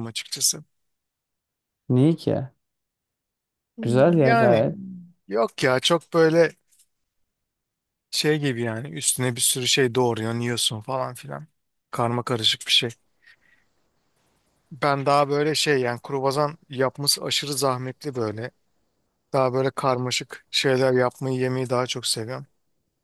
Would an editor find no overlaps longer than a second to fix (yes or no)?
yes